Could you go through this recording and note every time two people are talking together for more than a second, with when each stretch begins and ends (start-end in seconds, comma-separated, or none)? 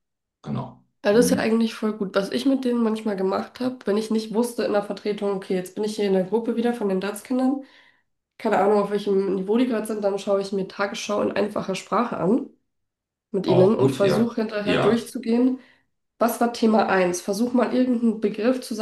13.5-15.1